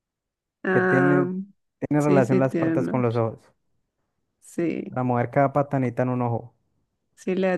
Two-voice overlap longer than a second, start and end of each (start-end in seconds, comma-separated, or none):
2.0-3.2